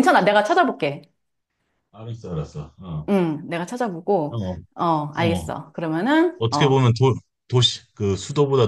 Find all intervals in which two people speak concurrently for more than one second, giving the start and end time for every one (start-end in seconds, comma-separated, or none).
none